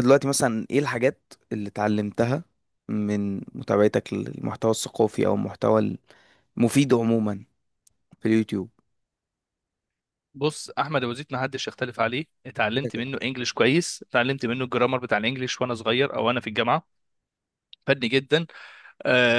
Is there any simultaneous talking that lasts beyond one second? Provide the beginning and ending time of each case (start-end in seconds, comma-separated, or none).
none